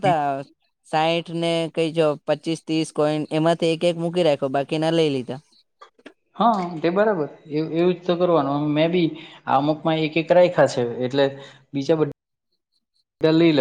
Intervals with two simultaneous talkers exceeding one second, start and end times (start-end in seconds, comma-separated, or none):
none